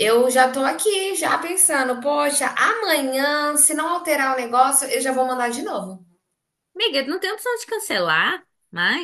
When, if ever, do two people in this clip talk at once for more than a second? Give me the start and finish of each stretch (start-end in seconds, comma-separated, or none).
none